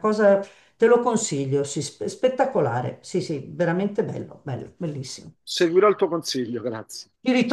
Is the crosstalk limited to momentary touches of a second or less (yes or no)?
yes